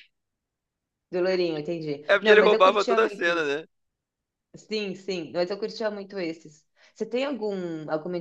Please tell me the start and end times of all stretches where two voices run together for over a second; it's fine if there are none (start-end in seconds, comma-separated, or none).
2.1-3.6